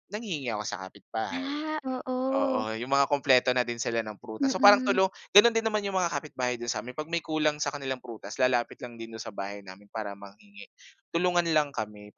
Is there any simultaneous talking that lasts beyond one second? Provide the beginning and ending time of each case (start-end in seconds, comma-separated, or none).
none